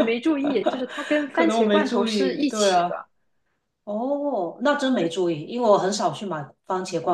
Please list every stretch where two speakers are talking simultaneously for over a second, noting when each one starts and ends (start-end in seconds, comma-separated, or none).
1.3-2.9